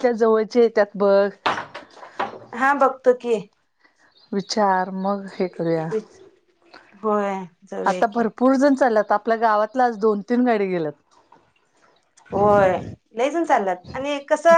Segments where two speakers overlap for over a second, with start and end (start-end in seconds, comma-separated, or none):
none